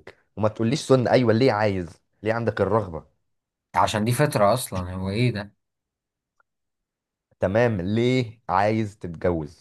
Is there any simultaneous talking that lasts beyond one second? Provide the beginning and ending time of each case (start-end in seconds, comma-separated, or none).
none